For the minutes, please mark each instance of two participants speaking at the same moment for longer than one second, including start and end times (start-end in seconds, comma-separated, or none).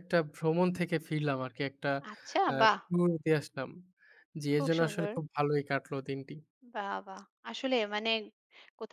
none